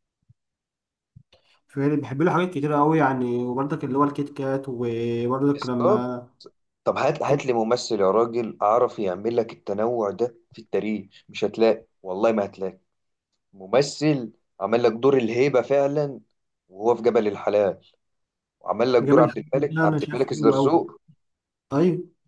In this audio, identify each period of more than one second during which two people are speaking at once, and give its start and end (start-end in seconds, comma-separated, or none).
19.0-20.9